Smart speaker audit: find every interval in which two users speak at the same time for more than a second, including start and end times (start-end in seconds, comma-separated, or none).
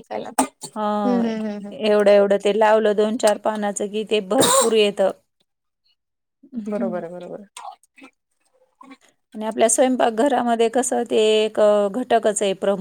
none